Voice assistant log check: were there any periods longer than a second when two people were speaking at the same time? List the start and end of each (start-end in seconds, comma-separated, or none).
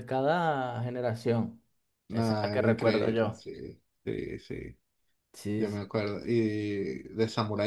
2.1-3.4